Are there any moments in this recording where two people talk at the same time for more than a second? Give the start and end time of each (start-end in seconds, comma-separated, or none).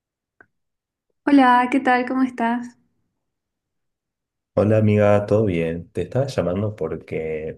none